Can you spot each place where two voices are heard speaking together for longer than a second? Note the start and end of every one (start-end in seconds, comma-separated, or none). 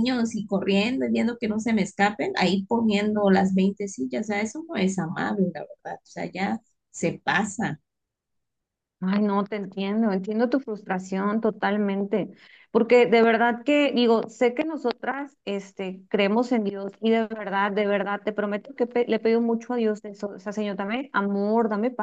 none